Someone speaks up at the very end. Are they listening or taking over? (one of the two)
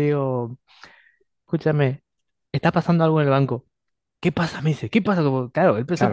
taking over